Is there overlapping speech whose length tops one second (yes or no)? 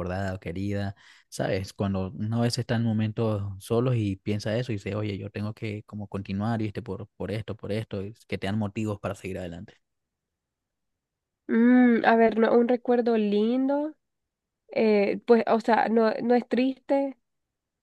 no